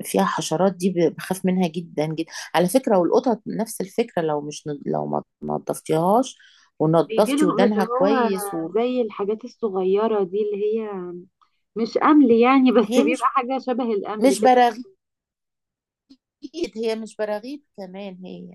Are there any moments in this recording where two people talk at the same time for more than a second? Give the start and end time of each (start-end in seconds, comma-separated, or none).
7.0-8.3